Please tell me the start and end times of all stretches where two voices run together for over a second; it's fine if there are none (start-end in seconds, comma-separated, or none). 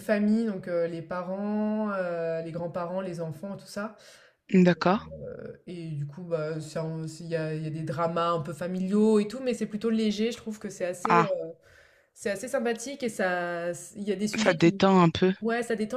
none